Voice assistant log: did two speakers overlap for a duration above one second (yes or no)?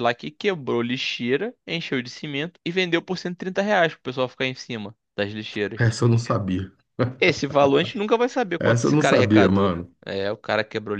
yes